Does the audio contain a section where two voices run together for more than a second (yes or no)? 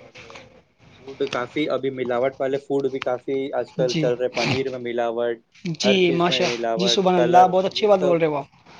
yes